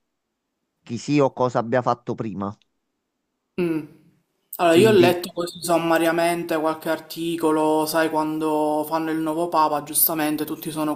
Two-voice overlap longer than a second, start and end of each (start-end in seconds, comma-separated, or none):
none